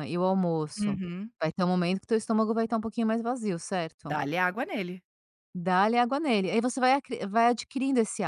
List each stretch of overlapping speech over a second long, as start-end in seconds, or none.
none